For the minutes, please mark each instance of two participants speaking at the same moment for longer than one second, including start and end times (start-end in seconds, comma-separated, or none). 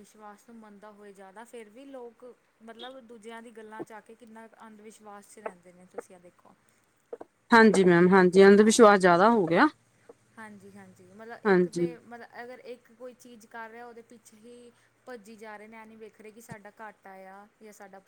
none